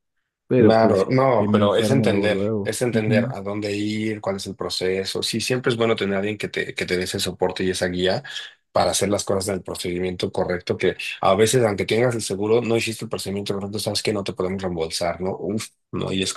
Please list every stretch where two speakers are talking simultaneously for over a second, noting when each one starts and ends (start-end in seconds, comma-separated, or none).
0.6-3.3